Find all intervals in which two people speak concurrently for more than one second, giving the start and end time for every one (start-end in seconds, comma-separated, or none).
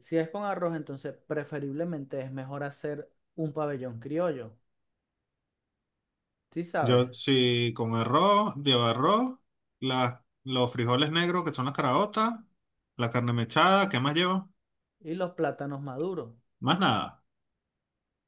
none